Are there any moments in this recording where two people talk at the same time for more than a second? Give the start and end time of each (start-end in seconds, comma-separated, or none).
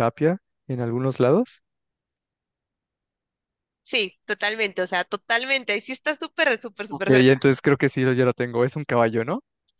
none